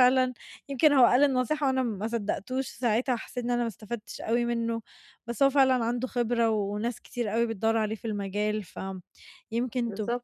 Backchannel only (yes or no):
yes